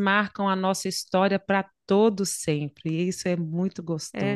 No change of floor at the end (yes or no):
no